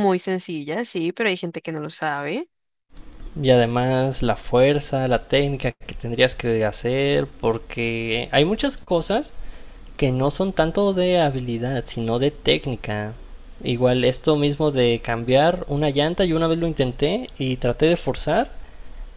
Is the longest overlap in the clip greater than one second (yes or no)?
no